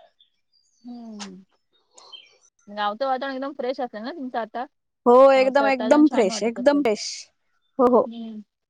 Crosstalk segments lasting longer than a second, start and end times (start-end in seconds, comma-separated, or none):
5.3-6.9